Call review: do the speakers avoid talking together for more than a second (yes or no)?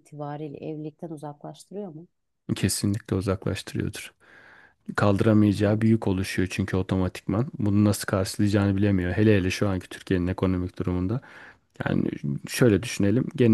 yes